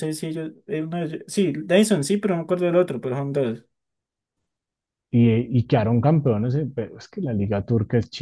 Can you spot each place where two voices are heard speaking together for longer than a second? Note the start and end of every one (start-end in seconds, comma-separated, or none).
none